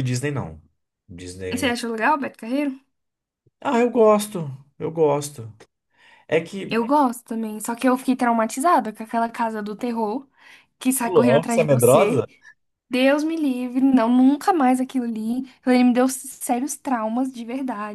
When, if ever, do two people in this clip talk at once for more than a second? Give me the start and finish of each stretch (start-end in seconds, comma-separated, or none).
11.0-12.2